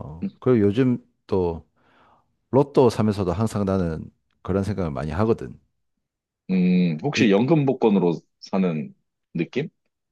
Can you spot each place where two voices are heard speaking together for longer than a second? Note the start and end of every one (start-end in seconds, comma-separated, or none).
none